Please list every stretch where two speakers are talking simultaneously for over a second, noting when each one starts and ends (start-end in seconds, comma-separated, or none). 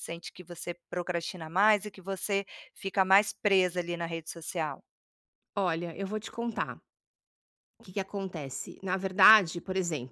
none